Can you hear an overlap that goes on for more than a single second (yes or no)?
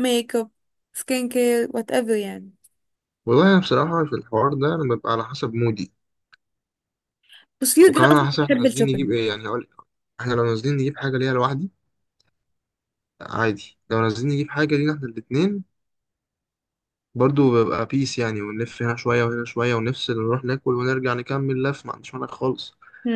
yes